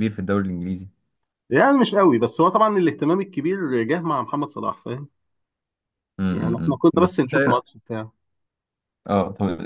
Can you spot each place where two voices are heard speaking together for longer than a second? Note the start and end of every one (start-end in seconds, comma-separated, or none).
6.3-7.8